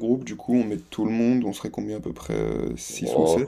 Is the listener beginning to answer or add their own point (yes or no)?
yes